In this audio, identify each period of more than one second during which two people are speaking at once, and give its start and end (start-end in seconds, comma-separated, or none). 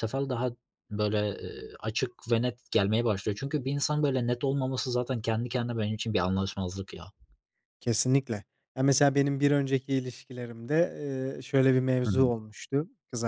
none